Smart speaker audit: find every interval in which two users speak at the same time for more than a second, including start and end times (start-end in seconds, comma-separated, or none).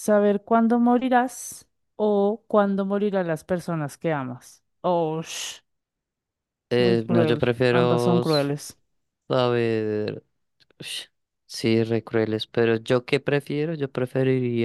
6.8-8.5